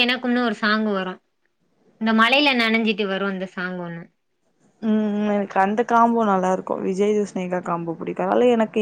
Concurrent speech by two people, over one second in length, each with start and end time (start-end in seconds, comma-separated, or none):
none